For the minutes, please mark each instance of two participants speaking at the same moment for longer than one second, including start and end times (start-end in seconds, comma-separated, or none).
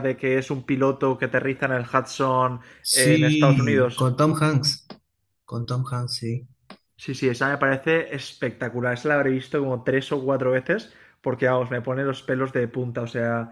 2.8-4.1